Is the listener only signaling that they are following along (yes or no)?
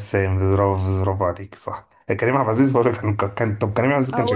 no